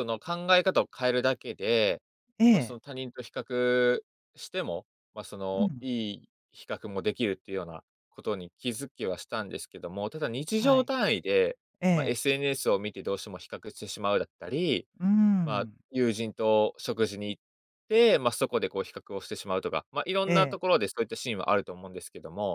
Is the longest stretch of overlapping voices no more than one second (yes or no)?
yes